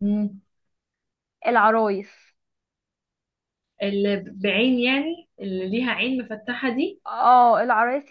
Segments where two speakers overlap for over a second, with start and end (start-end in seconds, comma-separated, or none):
none